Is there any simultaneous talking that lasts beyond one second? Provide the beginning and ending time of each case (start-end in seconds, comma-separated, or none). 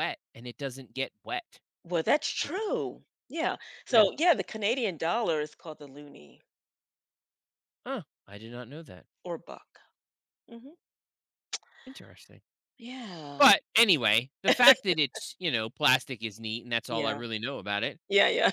none